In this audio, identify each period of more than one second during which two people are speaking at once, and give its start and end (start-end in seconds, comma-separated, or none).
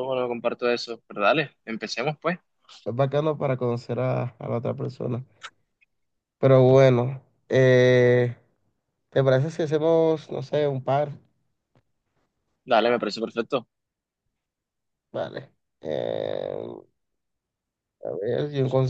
none